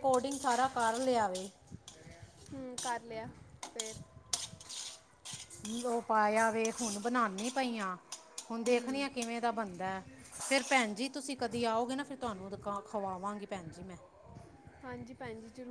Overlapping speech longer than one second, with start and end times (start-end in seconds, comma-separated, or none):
none